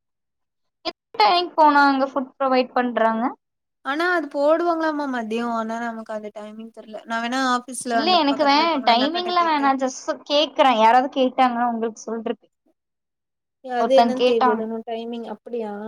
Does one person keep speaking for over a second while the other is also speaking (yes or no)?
yes